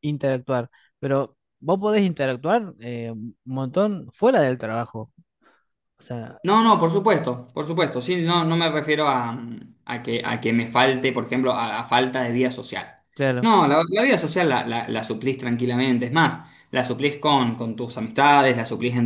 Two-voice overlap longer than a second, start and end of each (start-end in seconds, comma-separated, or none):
none